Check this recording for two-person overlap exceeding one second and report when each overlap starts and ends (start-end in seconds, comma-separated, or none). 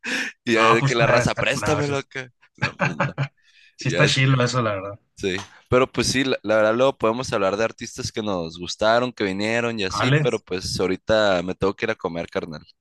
0.6-1.9